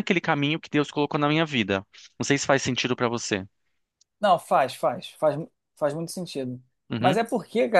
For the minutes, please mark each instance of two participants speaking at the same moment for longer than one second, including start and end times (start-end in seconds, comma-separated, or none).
none